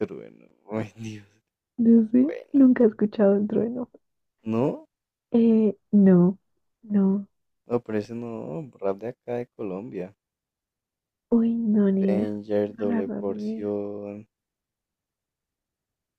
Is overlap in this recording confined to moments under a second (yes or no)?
no